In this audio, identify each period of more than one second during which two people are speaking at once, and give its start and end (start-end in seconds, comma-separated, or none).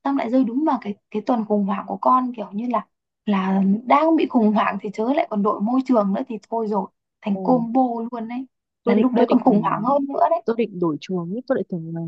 none